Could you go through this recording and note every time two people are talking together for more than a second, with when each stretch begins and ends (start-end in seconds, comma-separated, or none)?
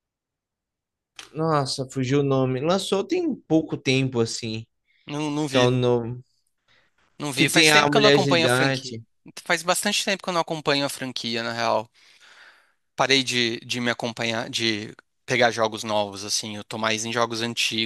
7.3-9.0